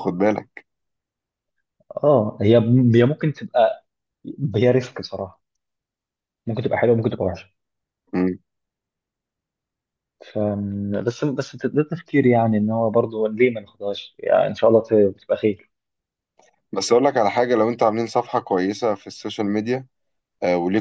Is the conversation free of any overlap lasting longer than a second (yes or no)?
yes